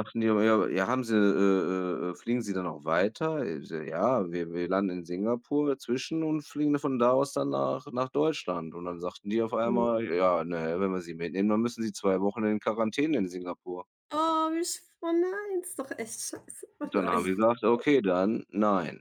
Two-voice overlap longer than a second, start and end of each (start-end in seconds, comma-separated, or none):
none